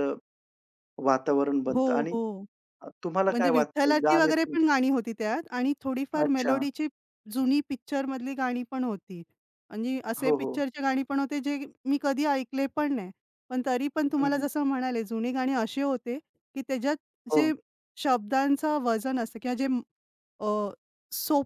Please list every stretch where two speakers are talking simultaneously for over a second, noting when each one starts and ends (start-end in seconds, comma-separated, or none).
3.3-4.6